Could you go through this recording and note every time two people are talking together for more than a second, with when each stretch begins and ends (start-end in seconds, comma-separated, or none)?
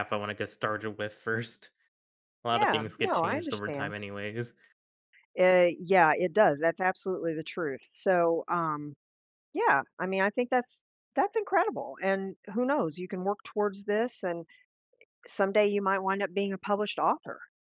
2.5-4.0